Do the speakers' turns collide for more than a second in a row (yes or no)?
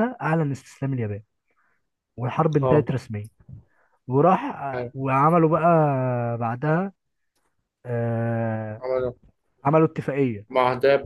no